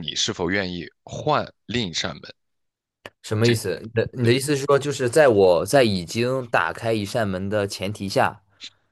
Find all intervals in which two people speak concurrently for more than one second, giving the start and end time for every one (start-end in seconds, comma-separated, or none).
none